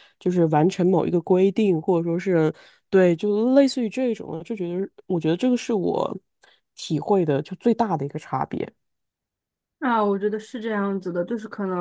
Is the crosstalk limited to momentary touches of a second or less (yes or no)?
yes